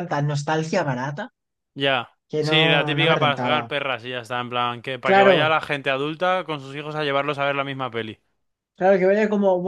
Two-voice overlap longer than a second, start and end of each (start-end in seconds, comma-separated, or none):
2.3-3.7